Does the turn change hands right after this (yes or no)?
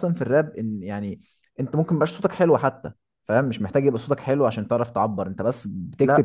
no